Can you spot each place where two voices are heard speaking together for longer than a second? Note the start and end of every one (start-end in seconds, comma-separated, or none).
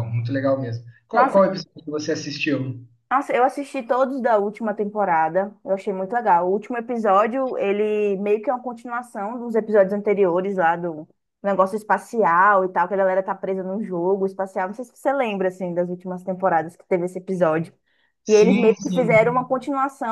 18.3-19.6